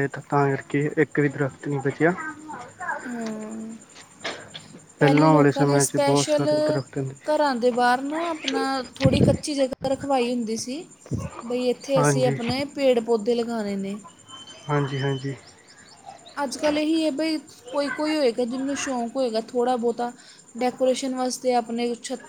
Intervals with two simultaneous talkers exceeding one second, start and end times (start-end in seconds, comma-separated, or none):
5.0-6.5